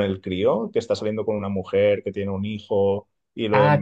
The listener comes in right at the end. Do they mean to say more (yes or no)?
yes